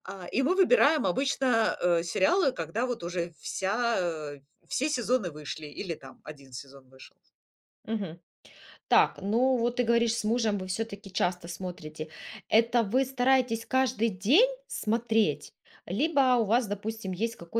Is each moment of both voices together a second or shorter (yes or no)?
yes